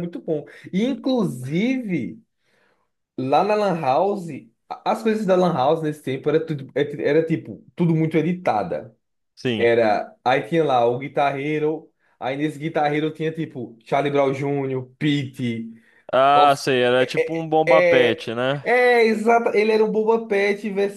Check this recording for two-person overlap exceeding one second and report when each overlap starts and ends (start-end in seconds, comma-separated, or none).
17.0-18.6